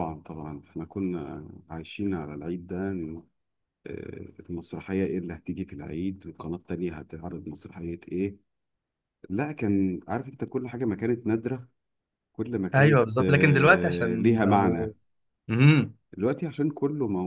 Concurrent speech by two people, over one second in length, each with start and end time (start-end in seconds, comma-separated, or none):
12.7-14.9